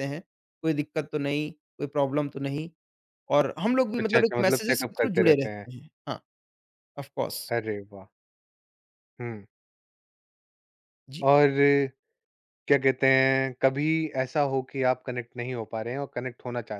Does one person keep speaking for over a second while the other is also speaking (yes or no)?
yes